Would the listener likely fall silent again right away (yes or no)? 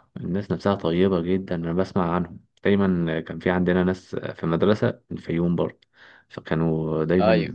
yes